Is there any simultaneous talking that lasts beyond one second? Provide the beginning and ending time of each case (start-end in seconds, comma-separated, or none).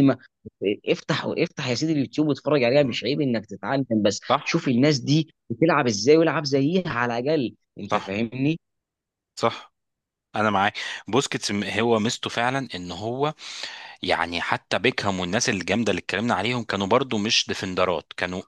none